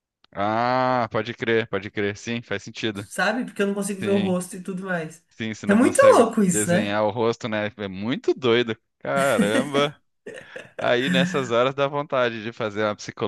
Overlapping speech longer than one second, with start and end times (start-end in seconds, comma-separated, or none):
5.7-7.0